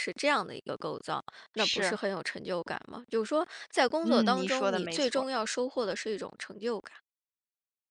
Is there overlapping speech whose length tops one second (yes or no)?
yes